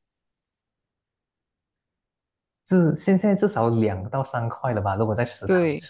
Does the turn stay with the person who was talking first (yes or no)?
no